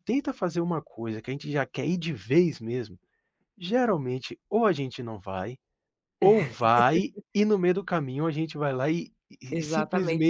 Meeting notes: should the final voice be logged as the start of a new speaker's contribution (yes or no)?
yes